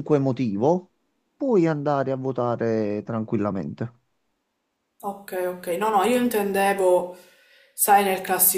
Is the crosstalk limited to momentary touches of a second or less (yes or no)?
yes